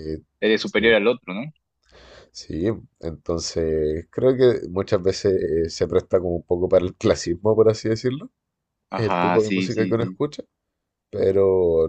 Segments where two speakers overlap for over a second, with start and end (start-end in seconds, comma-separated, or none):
8.9-10.2